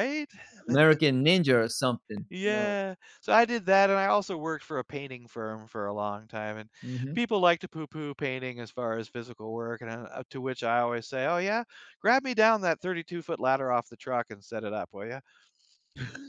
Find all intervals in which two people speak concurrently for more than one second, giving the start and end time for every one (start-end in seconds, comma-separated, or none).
none